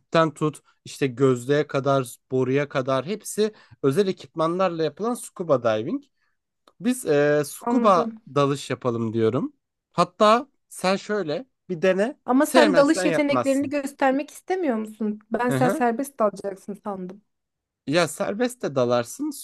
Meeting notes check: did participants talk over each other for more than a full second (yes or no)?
yes